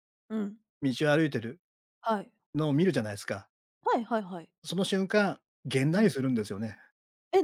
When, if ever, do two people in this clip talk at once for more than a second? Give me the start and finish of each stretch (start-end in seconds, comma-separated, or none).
none